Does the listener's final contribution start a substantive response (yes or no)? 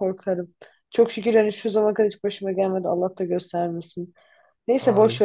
no